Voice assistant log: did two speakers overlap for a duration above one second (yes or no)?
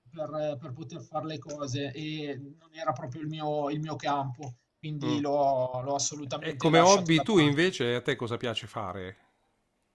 yes